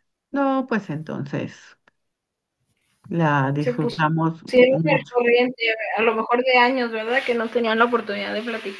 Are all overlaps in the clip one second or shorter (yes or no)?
no